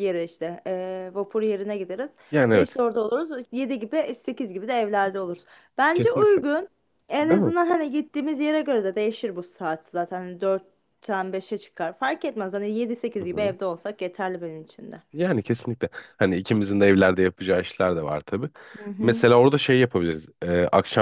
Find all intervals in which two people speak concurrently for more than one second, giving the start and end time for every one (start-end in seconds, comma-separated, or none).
none